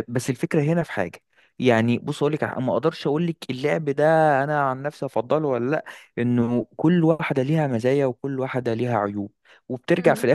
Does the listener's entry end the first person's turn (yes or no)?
no